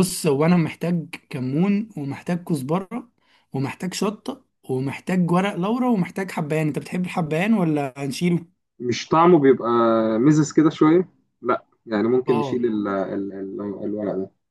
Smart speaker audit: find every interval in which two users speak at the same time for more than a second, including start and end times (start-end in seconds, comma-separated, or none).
none